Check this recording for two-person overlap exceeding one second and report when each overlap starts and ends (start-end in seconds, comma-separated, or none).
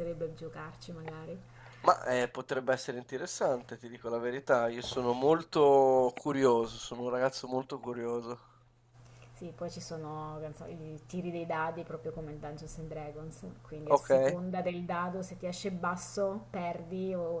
none